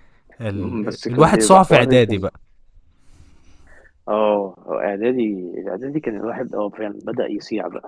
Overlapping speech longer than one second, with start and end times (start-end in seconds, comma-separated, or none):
0.5-2.2